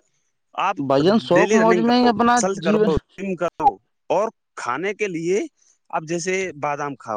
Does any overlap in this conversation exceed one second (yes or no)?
yes